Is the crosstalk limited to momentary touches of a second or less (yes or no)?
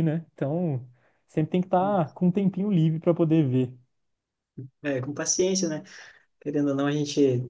yes